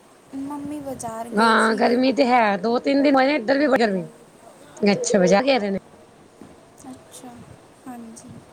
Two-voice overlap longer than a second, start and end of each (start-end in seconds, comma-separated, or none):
none